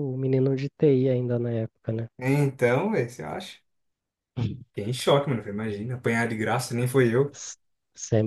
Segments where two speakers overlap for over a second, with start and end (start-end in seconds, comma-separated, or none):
none